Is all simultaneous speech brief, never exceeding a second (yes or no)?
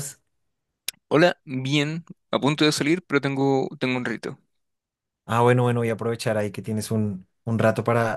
yes